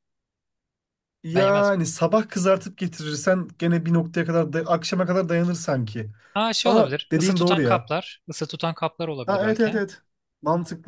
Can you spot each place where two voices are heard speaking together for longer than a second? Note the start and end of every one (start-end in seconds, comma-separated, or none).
6.6-7.9